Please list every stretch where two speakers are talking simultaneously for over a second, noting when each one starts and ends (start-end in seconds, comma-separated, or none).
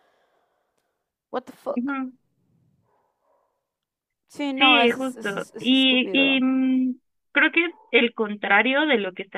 4.6-6.5